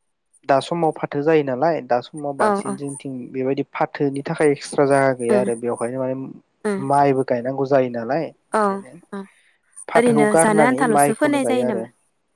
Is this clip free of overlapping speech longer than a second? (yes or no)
no